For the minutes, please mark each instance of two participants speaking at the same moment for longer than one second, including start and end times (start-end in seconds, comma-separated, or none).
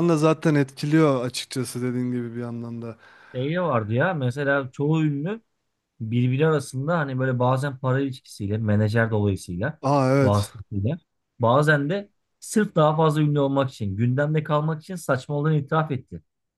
none